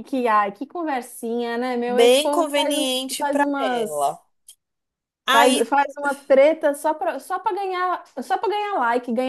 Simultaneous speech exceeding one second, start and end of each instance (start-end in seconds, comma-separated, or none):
1.9-4.2